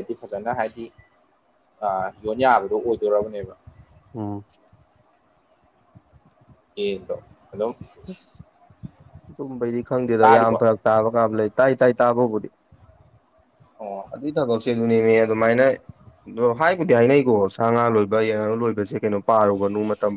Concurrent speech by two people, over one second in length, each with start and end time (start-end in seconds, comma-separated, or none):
none